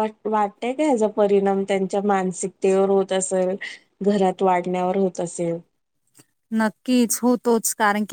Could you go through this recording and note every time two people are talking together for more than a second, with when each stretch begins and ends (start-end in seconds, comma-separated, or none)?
none